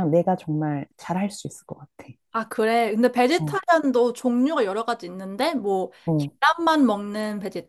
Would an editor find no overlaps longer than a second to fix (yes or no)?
yes